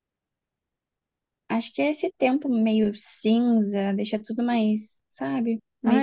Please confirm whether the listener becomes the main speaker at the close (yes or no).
yes